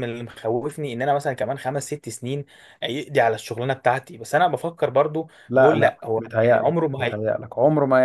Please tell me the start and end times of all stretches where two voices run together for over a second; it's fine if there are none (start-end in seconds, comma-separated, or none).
5.5-7.2